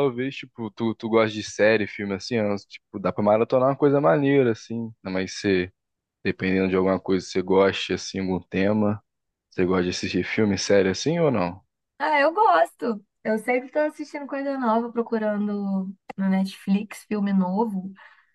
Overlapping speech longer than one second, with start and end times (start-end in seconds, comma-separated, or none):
none